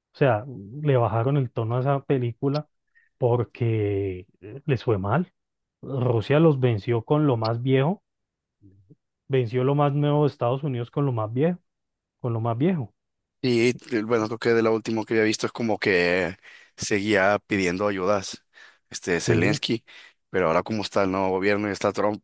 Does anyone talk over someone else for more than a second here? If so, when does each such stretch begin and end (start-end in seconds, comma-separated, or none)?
none